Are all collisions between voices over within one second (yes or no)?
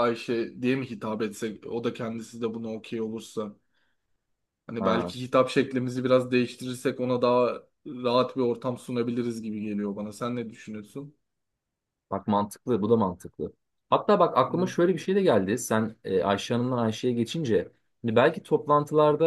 yes